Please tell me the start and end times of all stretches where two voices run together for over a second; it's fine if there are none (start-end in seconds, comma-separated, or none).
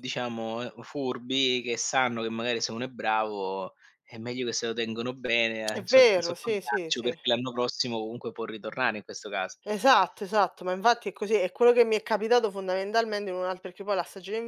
5.7-7.1